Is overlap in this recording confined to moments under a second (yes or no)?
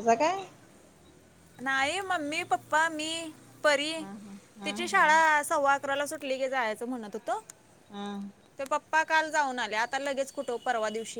yes